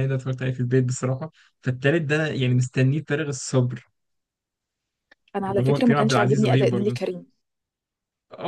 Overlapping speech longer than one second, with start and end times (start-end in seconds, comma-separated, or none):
5.5-7.0